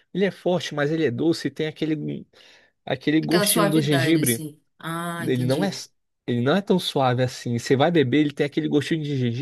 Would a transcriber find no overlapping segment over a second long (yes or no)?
no